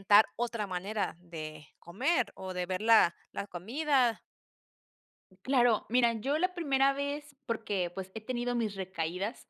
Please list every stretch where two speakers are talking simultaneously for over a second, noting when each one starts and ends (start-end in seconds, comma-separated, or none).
none